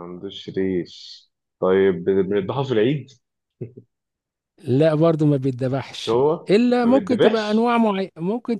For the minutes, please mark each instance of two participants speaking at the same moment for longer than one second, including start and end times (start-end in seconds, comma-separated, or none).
5.9-7.7